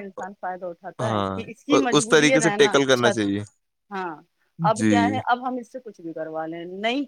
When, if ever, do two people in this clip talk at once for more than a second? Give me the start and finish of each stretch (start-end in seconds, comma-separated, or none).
1.0-3.2